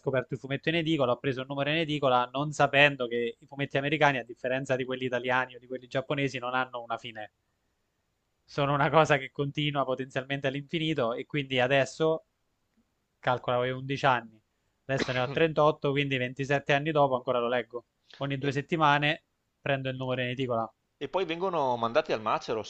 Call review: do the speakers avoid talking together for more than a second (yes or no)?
yes